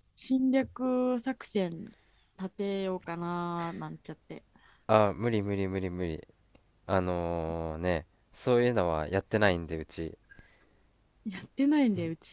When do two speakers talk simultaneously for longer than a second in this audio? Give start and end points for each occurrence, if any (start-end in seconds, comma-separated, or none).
none